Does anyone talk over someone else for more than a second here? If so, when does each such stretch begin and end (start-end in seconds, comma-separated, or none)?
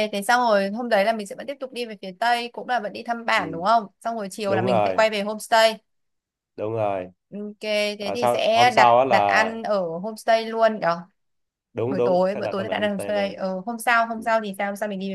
8.0-9.5, 11.8-13.3